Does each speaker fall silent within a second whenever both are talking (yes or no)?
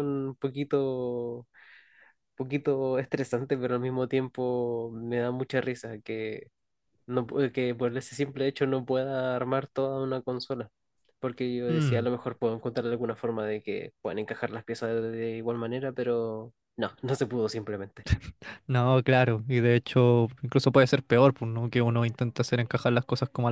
yes